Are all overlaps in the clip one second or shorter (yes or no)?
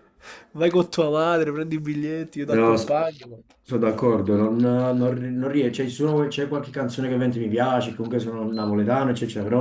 yes